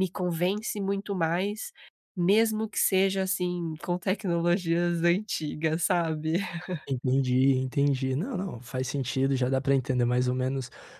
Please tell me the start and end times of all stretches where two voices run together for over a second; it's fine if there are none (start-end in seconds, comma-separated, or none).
none